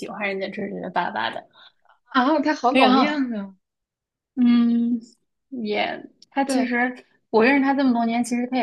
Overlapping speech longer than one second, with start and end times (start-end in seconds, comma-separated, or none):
none